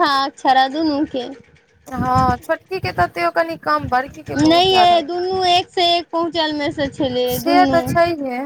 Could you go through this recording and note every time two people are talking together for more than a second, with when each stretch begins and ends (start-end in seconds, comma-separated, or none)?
none